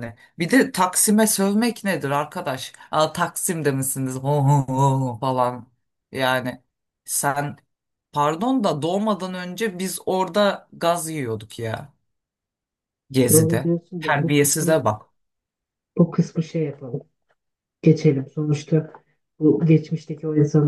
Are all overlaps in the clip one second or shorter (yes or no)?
no